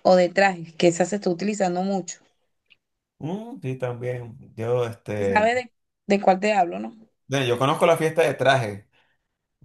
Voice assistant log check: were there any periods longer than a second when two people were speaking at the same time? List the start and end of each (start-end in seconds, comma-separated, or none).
none